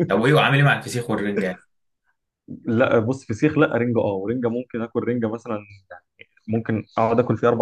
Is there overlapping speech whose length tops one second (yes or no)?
no